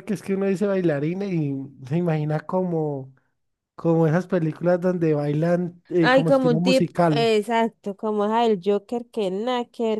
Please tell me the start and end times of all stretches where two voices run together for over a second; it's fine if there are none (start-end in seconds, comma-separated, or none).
6.0-7.3